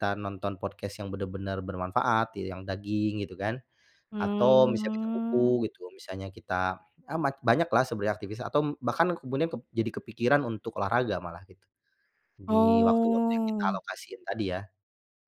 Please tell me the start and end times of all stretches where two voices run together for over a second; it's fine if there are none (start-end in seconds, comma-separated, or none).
4.2-5.6, 12.5-13.8